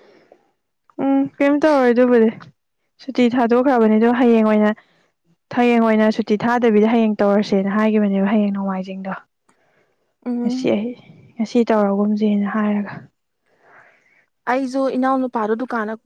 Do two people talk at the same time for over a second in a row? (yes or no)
no